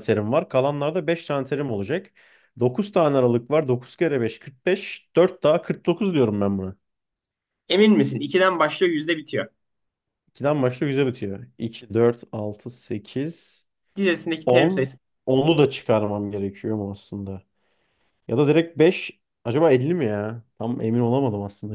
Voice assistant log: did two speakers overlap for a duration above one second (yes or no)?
no